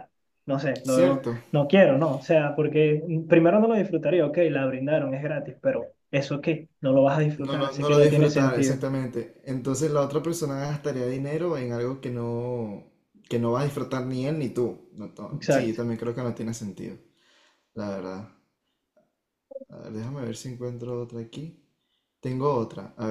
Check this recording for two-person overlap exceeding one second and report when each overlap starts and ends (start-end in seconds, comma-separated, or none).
7.4-8.8